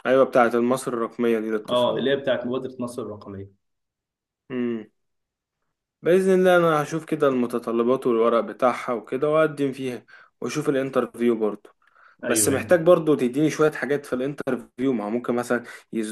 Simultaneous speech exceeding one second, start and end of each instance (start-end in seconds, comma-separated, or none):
none